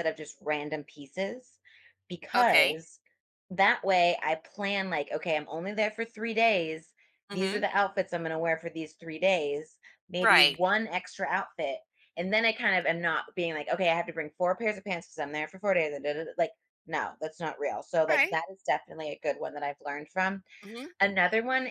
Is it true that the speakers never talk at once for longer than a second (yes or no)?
yes